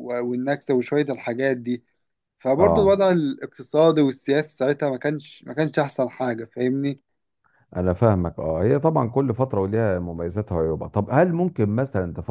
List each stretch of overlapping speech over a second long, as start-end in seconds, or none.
none